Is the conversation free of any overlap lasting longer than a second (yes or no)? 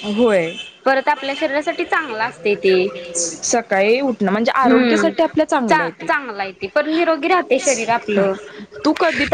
yes